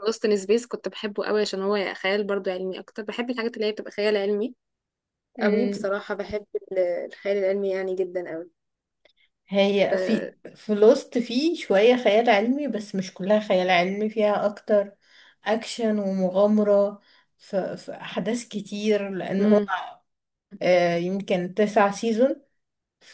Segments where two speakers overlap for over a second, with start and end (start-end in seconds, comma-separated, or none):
none